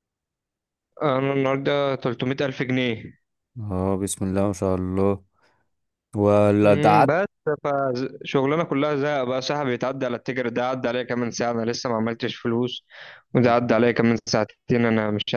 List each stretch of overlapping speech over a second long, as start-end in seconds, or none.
none